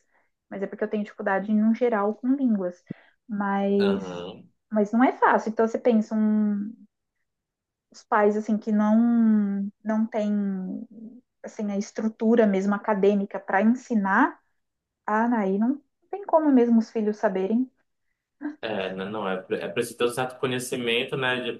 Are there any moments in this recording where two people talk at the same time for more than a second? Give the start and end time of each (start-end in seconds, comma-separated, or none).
none